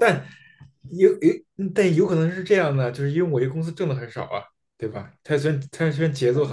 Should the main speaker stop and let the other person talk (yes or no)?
yes